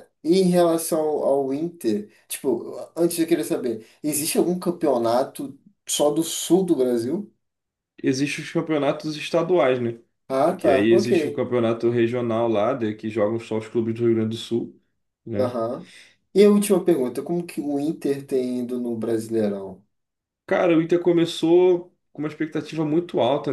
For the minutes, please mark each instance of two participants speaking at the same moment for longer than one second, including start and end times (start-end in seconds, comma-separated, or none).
none